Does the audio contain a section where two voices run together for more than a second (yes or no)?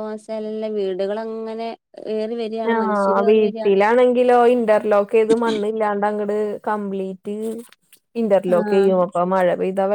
no